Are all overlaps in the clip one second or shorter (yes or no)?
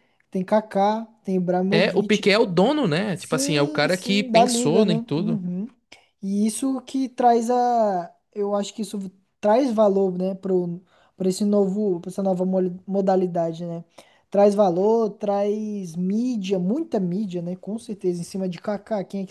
no